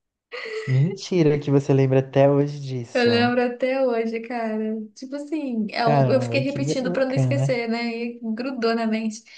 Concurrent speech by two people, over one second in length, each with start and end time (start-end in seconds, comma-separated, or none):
5.8-7.6